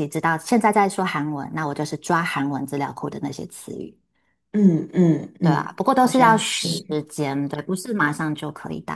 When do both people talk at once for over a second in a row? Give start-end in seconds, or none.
5.4-6.8